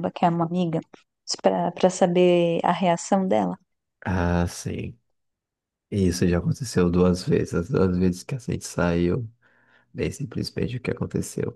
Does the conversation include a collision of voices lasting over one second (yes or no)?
no